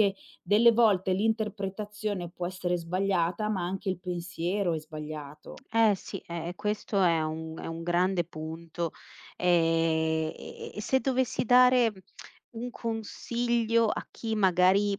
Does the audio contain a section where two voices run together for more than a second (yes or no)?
no